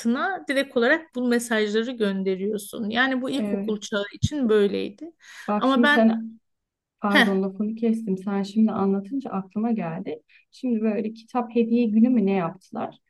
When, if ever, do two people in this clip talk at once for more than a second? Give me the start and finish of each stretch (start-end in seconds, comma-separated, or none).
none